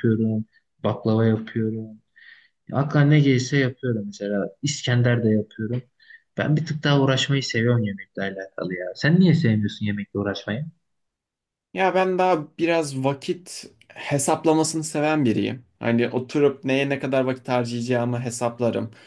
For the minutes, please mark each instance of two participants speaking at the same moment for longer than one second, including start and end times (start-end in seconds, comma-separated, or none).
none